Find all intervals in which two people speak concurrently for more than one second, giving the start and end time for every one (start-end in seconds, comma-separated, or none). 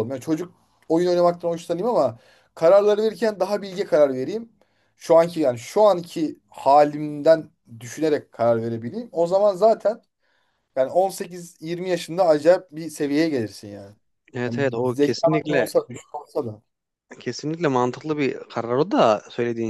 14.5-15.7